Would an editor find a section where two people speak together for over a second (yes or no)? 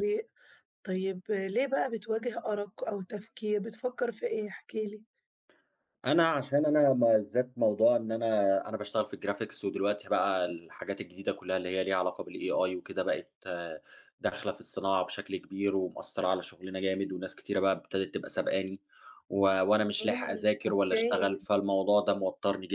yes